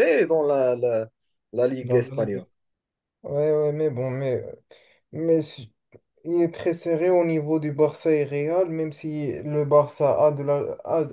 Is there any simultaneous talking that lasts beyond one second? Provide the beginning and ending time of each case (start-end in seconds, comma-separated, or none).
none